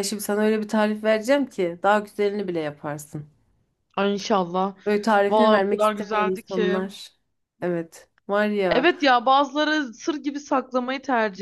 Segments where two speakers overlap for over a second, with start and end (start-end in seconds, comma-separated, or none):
5.3-6.8